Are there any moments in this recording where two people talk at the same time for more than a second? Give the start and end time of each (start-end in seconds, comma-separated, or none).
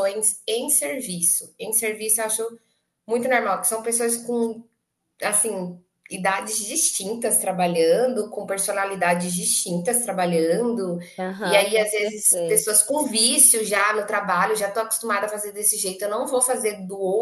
11.4-12.7